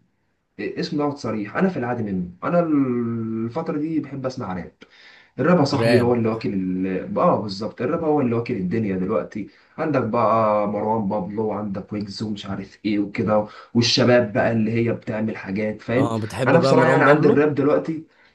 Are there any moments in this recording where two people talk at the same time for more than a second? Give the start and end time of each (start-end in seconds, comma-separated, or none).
16.0-17.5